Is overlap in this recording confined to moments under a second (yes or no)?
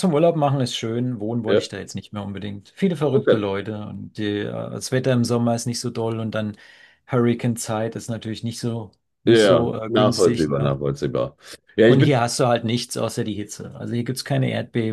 no